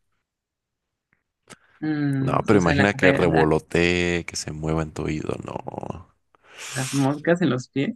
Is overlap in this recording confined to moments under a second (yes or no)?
no